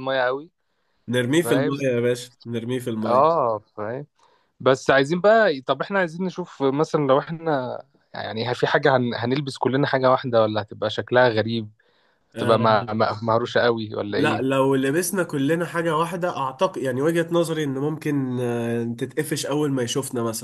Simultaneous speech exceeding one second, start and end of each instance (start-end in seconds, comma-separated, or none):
none